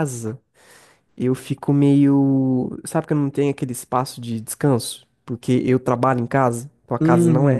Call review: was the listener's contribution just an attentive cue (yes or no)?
no